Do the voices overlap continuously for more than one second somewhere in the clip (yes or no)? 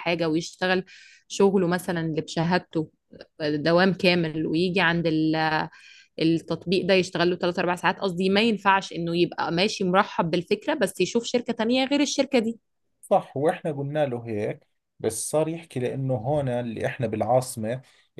no